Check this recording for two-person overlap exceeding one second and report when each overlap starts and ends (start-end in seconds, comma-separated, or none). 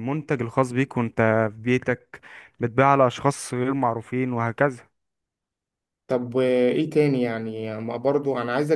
none